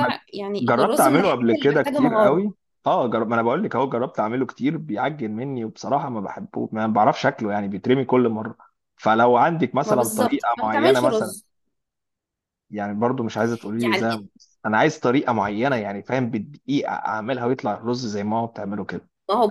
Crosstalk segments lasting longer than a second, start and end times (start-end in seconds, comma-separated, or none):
0.6-2.5, 9.8-11.3